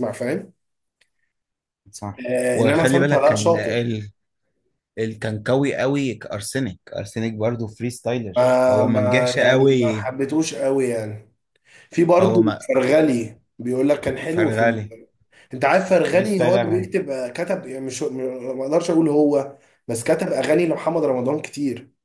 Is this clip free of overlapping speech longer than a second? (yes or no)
no